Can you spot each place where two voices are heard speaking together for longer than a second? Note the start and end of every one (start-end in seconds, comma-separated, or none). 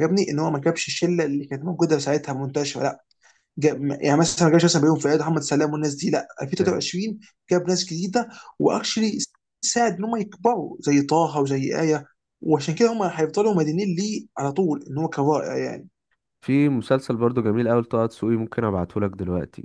none